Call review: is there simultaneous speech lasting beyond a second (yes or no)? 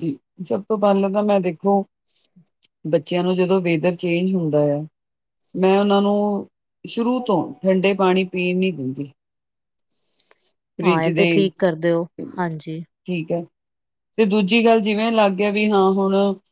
no